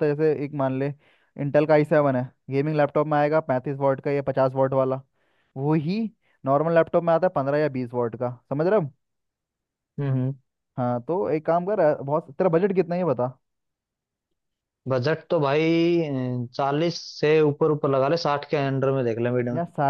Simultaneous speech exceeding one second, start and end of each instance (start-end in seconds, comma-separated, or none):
none